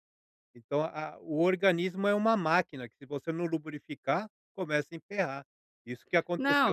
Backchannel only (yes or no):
no